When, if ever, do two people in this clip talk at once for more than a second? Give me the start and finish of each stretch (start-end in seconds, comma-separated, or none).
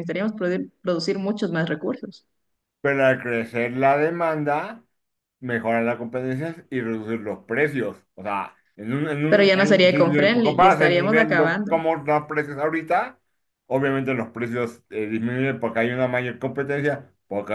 9.3-11.7